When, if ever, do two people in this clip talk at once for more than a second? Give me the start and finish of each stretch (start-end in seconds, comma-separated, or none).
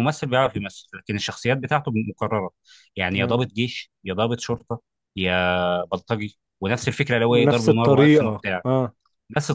7.3-8.6